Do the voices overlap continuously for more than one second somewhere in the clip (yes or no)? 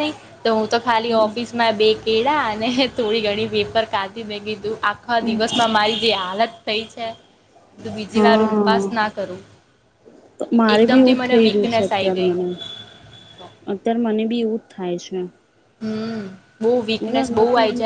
yes